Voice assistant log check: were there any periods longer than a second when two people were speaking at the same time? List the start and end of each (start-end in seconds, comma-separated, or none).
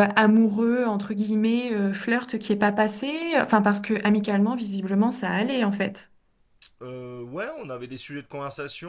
none